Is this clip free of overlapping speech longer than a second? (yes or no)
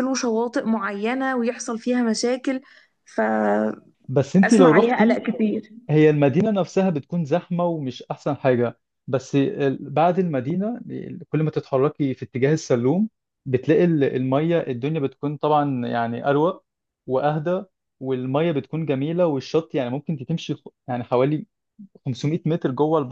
yes